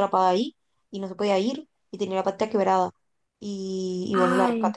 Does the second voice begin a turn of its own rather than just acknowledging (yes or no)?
no